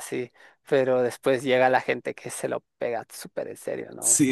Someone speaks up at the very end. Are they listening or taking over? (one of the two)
taking over